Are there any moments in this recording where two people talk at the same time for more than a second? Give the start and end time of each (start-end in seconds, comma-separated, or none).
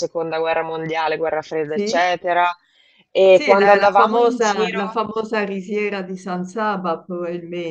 3.2-5.0